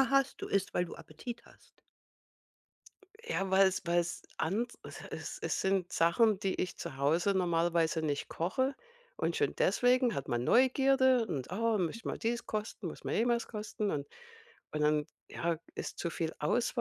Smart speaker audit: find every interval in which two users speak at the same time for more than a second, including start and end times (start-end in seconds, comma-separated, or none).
none